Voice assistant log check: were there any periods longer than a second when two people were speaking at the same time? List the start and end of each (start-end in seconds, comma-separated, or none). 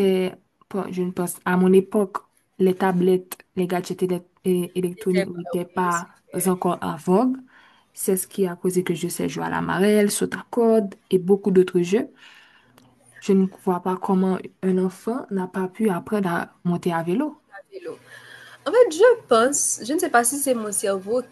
none